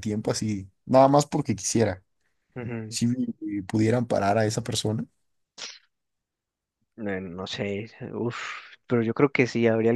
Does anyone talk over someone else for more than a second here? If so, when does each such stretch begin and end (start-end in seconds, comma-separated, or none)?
none